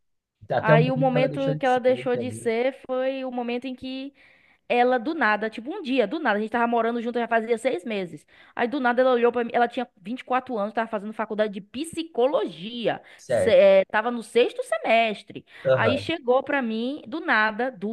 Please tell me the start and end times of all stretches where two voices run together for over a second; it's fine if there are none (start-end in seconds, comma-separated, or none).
0.6-2.5